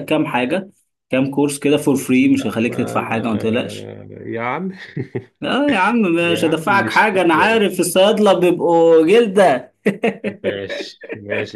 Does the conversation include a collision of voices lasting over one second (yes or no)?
yes